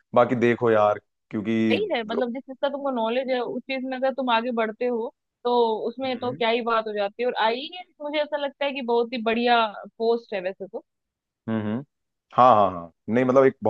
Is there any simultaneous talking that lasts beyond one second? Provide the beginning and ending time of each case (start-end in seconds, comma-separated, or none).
none